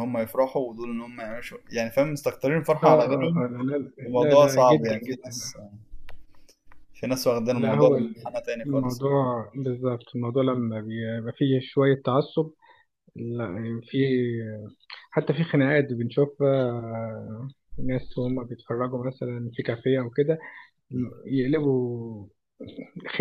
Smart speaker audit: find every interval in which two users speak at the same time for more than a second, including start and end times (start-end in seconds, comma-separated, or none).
4.1-5.4